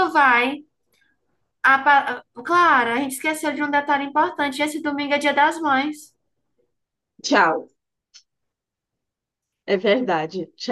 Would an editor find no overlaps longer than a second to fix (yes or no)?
yes